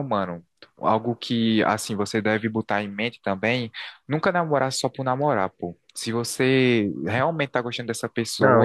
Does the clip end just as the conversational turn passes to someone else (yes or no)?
yes